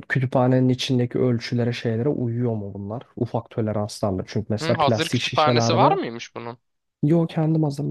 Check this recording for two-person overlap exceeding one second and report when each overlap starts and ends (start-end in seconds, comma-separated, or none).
4.6-6.0